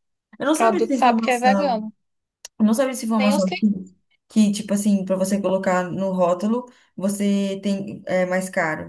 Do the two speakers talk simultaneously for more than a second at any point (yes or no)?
yes